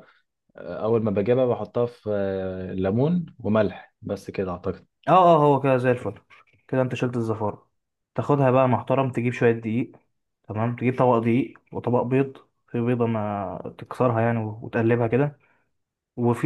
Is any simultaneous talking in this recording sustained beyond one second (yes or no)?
no